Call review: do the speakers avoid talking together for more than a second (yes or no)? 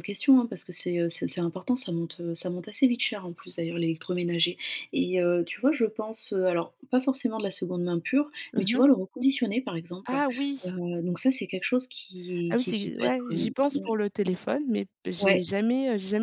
no